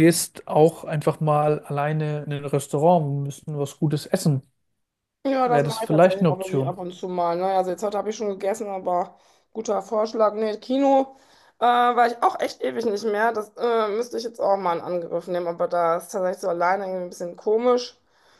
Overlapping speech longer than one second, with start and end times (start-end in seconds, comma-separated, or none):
5.4-6.8